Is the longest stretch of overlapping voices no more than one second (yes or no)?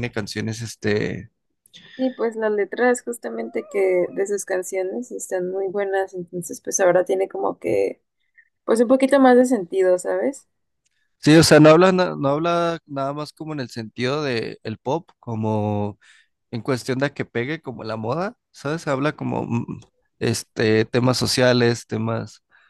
yes